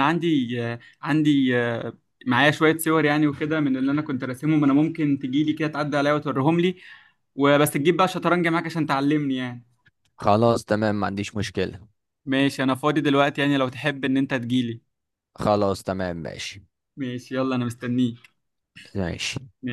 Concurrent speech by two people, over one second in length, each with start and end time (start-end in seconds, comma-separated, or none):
none